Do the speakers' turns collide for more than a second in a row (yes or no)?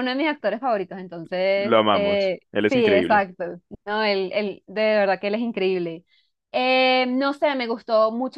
yes